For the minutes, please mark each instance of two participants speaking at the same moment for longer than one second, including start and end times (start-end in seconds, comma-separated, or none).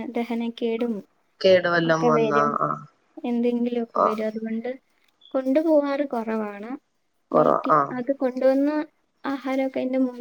none